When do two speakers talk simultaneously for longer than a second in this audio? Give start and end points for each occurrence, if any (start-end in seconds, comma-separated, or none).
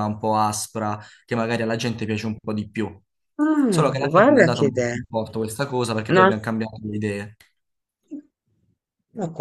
3.7-5.0